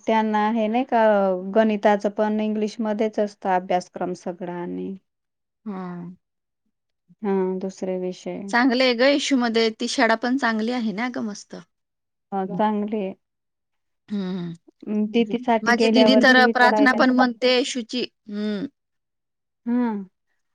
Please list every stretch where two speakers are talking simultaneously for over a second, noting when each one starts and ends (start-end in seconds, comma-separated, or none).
none